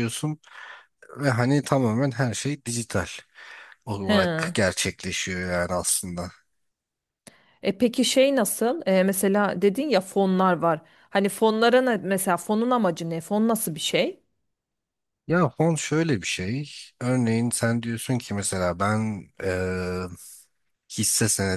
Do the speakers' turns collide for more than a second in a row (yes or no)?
no